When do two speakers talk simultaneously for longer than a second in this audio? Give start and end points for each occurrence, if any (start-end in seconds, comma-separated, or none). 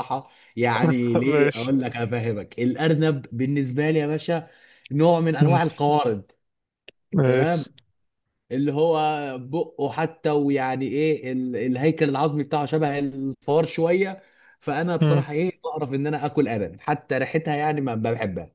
none